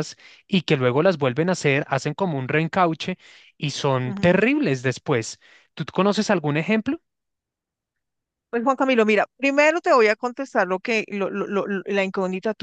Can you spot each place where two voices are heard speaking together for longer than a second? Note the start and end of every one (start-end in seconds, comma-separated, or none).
none